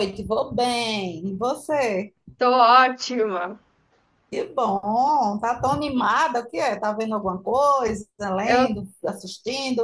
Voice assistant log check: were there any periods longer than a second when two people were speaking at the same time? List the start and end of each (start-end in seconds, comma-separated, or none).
none